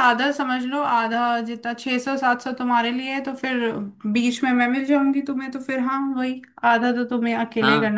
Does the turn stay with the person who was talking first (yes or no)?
no